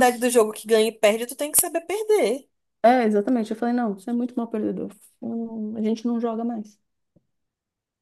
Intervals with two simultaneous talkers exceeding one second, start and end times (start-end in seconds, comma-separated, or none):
none